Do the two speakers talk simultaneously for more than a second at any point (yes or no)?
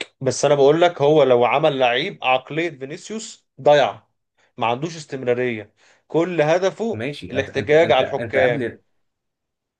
yes